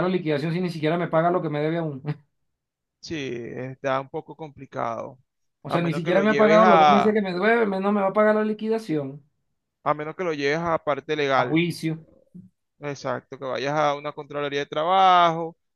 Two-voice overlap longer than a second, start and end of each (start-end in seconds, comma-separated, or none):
5.7-7.2